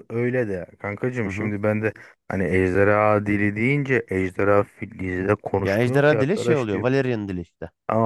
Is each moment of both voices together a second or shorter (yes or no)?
no